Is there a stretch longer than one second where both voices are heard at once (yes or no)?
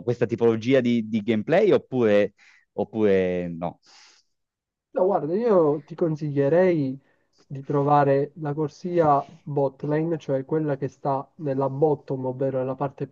no